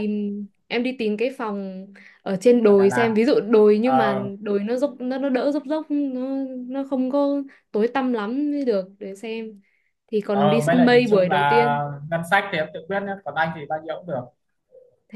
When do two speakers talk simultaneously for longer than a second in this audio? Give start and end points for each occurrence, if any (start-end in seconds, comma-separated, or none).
10.3-11.8